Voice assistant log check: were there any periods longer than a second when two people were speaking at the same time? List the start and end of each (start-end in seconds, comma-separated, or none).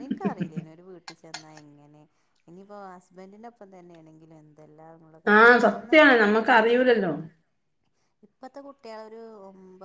5.4-7.0